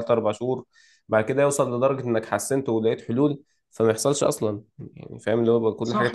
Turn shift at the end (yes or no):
yes